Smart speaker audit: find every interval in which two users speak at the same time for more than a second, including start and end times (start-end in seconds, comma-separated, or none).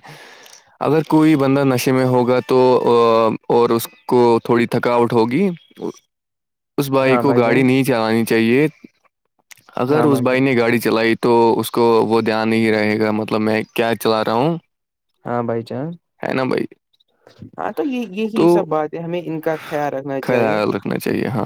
none